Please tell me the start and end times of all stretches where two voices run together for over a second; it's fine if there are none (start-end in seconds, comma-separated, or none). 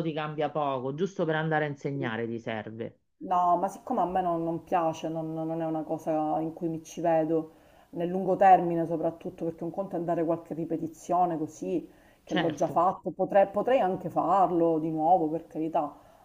none